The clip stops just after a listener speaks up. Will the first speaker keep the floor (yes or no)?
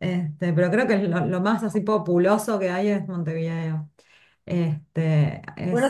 no